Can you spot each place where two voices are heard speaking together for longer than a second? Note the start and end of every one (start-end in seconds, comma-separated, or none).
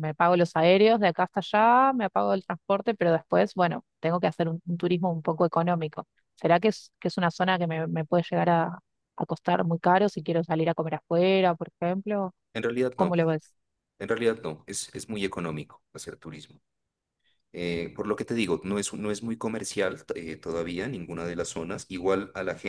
none